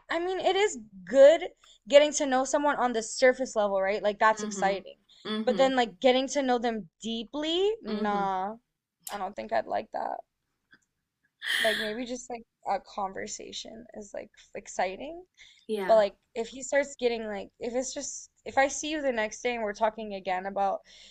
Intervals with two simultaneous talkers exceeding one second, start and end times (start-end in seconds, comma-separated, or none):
none